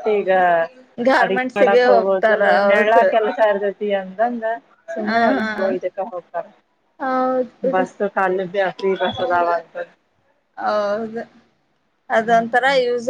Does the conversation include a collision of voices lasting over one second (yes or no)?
yes